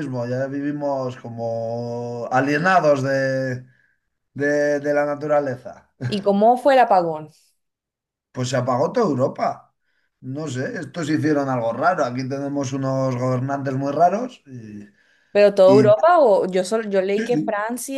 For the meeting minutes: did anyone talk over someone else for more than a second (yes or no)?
no